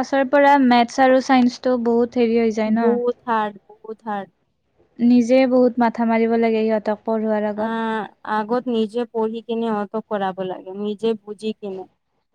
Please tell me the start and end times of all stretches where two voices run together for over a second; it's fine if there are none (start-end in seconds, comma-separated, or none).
none